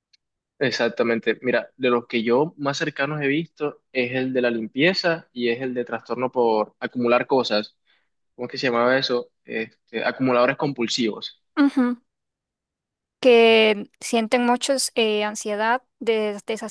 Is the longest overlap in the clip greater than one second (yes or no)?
no